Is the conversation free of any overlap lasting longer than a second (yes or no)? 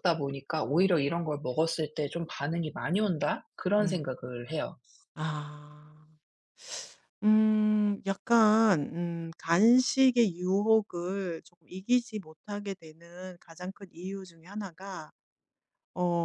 yes